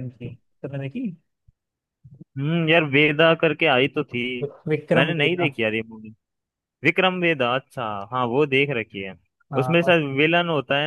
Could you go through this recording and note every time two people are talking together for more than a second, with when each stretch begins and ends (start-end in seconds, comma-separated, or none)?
none